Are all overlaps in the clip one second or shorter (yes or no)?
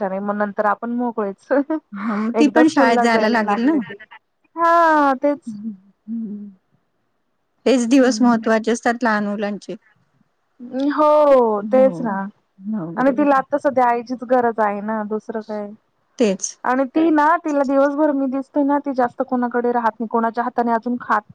yes